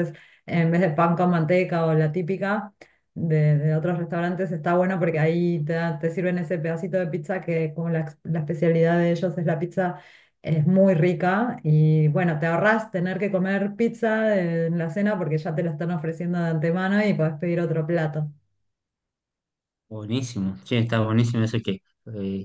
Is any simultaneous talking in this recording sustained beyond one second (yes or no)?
no